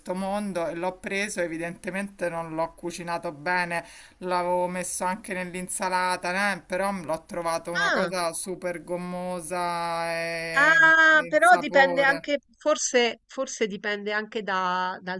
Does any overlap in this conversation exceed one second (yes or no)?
yes